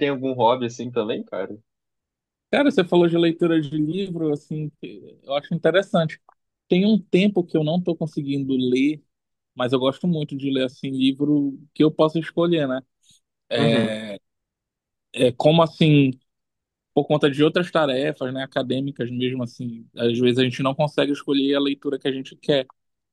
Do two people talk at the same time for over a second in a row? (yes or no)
no